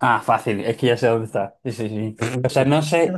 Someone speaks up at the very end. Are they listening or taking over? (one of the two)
listening